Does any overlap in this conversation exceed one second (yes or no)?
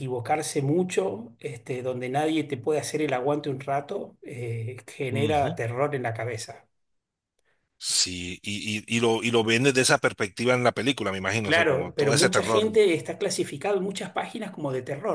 yes